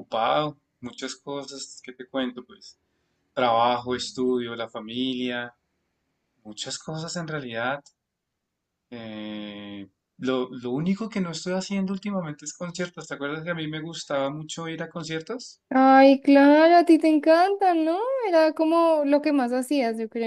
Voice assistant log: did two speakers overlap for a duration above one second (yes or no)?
no